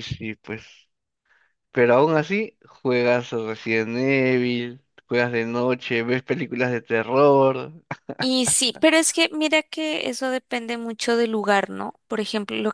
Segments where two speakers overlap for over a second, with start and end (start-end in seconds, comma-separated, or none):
none